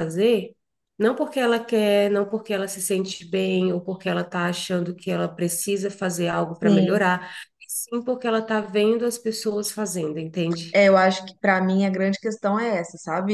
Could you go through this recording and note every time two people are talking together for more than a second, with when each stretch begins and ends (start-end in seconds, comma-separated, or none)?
none